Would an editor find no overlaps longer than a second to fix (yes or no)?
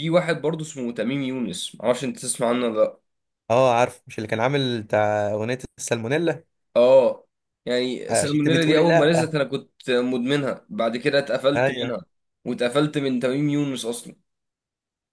no